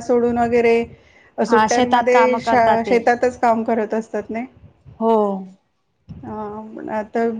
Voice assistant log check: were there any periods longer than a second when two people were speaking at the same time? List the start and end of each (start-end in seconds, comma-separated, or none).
1.5-3.0